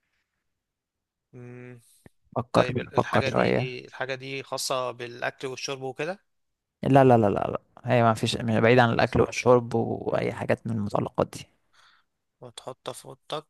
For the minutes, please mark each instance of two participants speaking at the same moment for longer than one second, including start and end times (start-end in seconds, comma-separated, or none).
2.5-3.8